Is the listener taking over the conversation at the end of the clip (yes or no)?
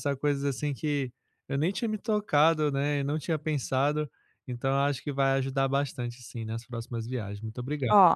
yes